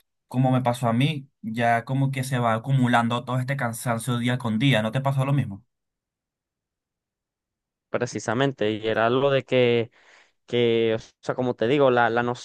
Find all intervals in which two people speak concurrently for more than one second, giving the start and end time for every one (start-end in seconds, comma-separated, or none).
none